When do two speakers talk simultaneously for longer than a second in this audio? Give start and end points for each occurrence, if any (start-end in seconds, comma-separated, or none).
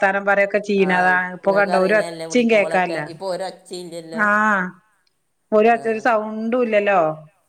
0.9-3.0